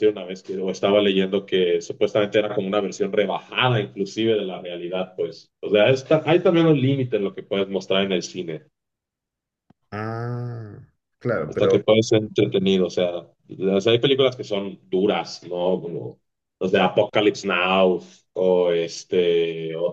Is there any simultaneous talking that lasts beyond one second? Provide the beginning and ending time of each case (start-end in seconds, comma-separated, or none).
none